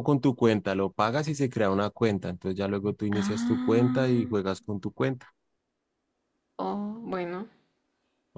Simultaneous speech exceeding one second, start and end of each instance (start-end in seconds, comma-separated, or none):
3.1-4.3